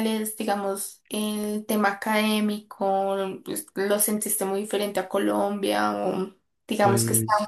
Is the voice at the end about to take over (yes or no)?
no